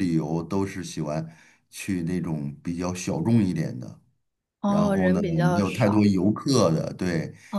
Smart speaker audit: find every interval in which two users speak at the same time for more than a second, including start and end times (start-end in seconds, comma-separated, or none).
4.7-6.1